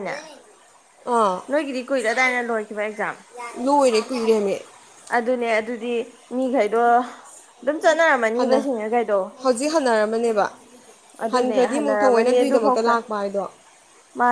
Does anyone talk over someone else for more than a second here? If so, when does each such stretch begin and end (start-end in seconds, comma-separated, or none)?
11.3-12.9